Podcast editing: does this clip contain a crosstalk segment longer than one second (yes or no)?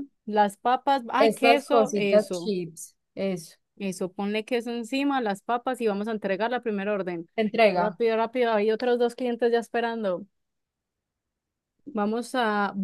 yes